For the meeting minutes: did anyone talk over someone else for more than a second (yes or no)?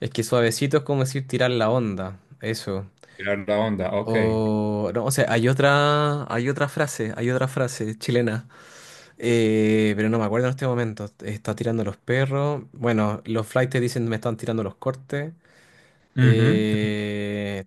no